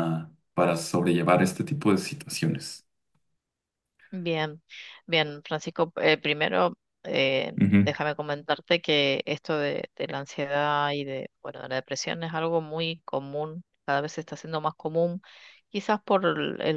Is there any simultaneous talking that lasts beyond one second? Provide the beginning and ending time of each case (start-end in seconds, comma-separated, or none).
none